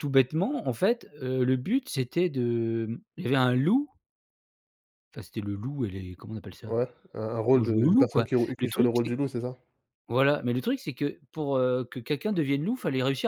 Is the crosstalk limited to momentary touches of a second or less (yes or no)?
no